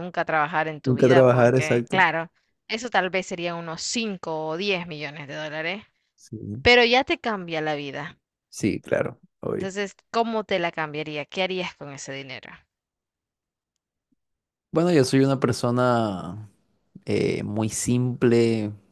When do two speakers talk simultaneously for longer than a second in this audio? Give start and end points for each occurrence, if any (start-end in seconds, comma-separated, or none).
0.8-2.1